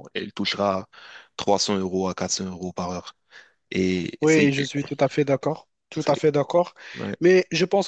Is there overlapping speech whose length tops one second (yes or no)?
no